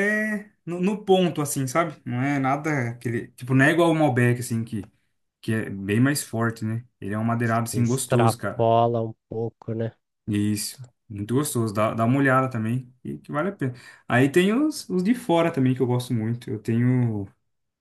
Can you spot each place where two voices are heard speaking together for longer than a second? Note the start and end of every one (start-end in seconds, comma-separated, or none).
7.4-8.7